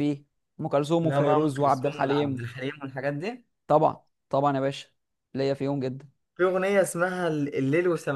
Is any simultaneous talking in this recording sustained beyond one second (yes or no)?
yes